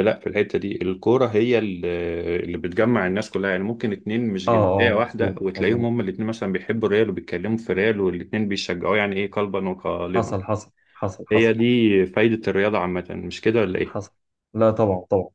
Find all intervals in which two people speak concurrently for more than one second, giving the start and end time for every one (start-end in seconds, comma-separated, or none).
4.5-5.9